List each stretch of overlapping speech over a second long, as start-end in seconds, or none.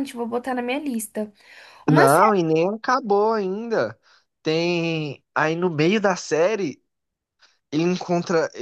none